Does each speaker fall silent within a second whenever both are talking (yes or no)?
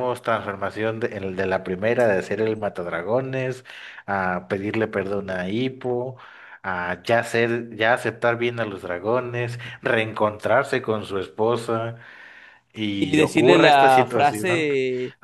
no